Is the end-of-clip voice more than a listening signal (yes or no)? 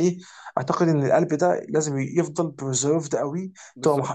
no